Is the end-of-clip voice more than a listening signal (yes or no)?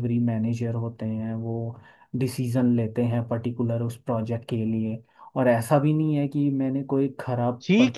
yes